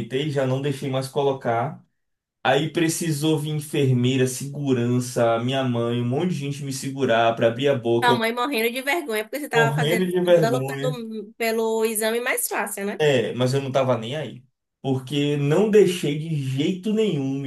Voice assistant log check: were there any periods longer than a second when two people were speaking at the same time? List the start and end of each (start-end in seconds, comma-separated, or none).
9.5-11.0